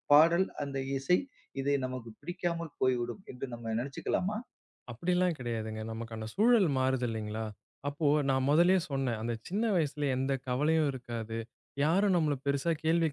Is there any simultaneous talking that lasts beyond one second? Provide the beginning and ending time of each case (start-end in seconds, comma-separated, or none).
none